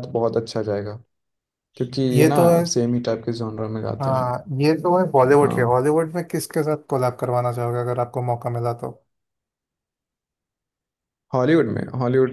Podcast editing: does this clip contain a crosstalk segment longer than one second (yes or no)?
no